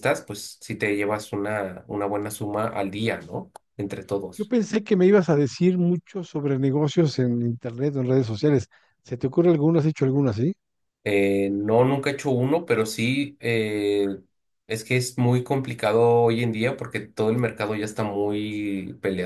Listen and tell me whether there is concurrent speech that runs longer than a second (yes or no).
no